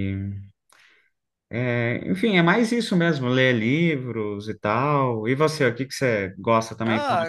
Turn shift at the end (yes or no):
yes